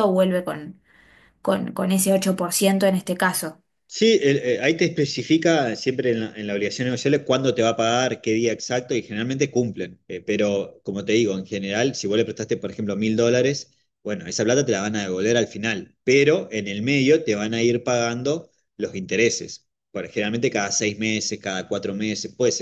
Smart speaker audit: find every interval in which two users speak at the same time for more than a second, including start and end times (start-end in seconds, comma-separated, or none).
none